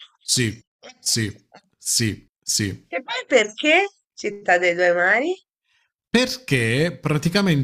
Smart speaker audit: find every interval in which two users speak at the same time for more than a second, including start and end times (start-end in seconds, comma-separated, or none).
none